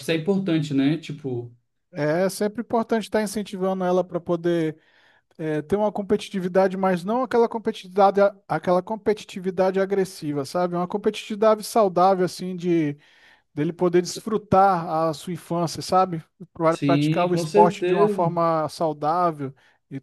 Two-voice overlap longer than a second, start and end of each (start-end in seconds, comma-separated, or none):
16.7-18.3